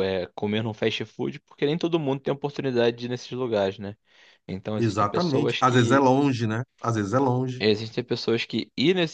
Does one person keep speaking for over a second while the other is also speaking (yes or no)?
yes